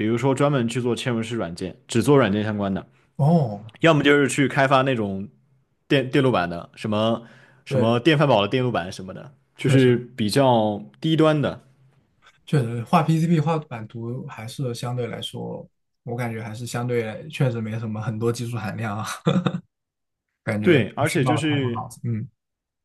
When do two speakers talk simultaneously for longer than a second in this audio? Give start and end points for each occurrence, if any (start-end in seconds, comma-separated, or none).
20.6-21.9